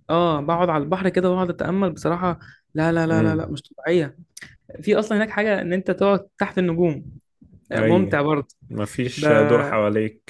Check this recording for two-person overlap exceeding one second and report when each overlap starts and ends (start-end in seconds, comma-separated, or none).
none